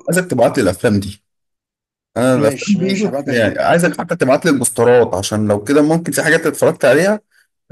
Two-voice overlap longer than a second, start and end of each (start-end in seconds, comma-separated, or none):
2.3-4.0